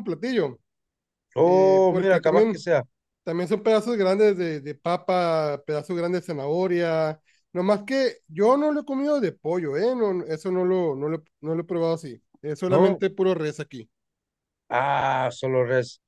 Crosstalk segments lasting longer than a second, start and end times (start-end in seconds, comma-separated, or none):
1.4-2.7